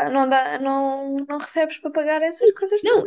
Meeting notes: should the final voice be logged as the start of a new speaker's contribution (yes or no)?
yes